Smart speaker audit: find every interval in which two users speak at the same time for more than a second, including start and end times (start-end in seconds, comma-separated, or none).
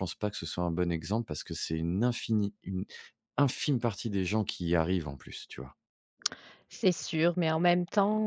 none